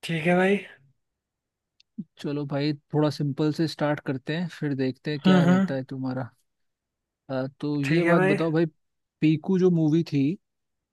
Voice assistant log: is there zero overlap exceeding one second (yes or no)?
yes